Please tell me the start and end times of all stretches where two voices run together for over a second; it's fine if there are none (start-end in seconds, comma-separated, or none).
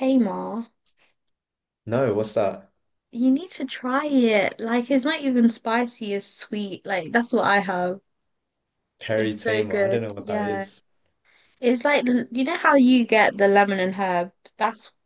9.2-10.7